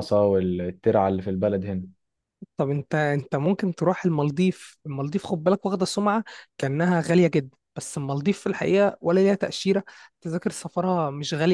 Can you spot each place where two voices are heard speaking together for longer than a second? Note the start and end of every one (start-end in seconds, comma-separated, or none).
none